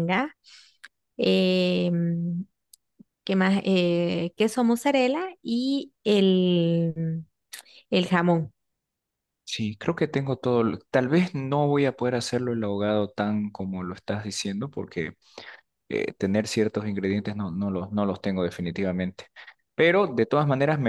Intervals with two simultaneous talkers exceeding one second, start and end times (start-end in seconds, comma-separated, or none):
none